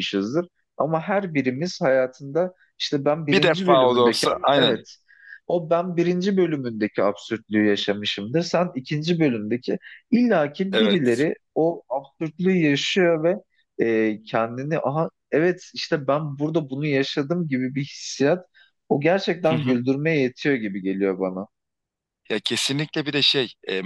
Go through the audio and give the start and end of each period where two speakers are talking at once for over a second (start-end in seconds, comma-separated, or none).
3.3-4.8